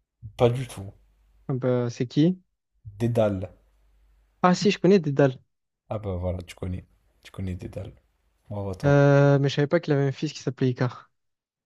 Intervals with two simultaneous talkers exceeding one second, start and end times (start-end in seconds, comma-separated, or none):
none